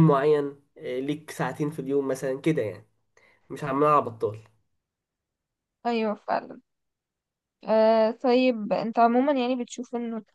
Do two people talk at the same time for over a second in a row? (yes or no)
no